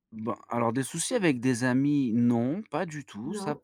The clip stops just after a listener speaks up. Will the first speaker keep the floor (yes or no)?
yes